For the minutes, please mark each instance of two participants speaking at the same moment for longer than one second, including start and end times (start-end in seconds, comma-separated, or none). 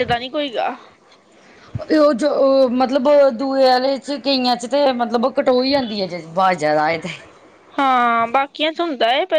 none